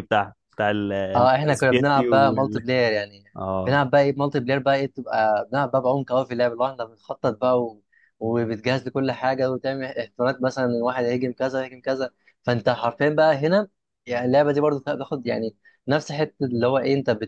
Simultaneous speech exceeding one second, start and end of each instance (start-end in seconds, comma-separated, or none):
1.1-2.7